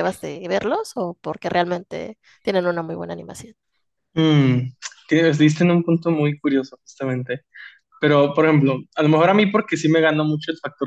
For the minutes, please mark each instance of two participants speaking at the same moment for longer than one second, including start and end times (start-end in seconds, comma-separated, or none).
none